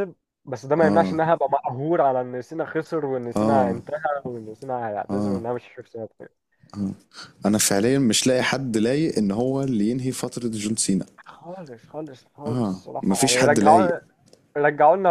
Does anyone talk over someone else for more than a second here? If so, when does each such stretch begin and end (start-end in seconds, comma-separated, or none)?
12.5-13.9